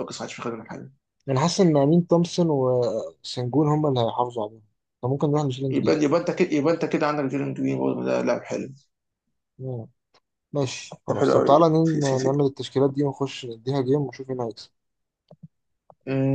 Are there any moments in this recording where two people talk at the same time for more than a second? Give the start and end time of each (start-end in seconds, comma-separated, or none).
11.1-12.4